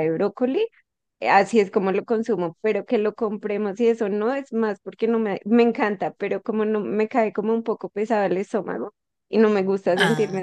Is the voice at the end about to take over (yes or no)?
no